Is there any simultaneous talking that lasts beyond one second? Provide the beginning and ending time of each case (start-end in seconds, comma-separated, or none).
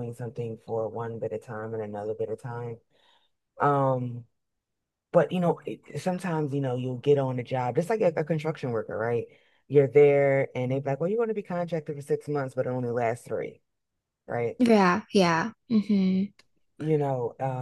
none